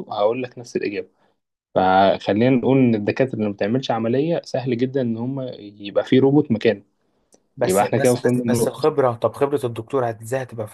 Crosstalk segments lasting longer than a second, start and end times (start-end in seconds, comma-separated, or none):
7.6-8.9